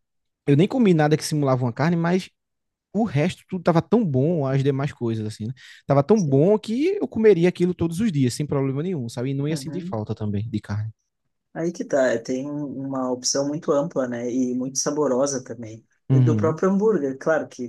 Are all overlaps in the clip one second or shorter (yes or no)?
yes